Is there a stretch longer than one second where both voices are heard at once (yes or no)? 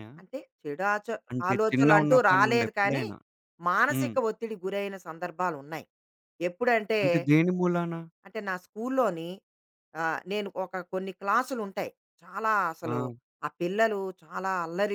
yes